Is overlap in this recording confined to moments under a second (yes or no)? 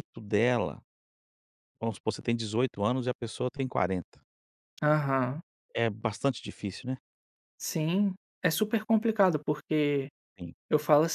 yes